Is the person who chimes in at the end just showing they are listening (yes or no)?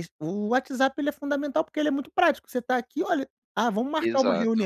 yes